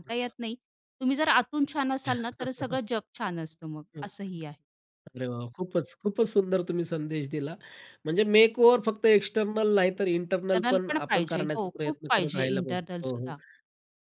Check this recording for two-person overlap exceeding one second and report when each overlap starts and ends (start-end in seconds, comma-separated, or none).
10.5-13.3